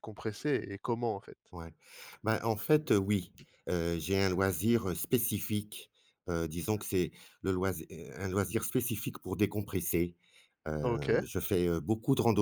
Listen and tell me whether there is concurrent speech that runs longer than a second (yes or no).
no